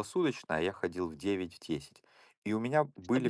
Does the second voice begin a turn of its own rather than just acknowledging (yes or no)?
no